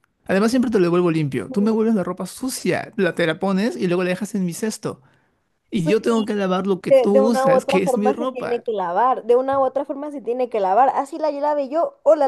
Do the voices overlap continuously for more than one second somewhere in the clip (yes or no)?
yes